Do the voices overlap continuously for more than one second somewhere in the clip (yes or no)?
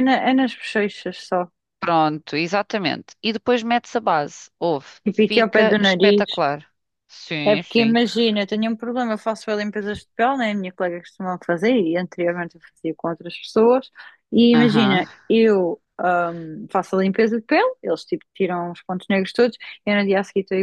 yes